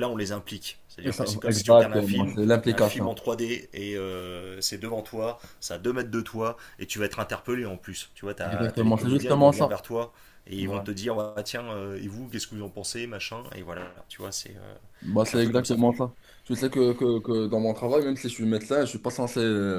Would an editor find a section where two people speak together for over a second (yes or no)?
yes